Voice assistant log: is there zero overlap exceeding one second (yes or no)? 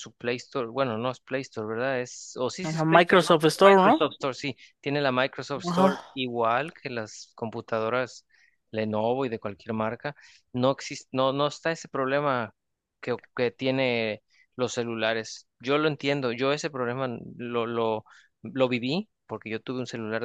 no